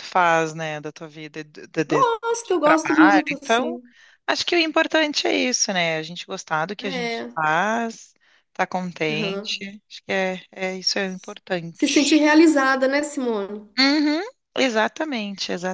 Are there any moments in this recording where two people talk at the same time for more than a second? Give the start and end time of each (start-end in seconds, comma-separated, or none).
1.9-3.8